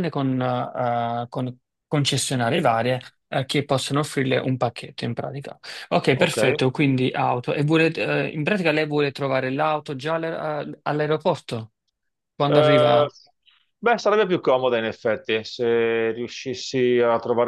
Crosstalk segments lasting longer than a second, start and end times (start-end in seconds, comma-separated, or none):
none